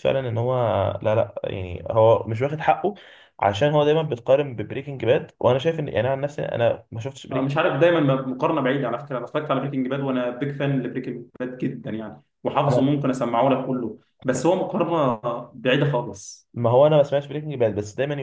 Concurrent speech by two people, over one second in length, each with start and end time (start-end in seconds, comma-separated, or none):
none